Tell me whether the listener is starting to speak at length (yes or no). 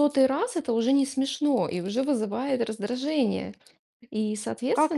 yes